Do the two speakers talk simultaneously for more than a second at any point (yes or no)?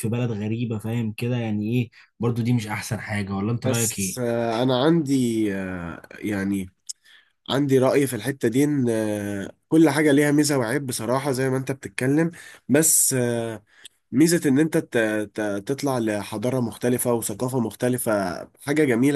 no